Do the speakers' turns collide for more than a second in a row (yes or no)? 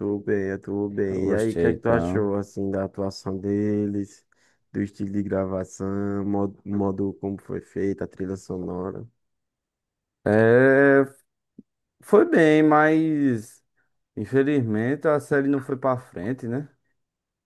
yes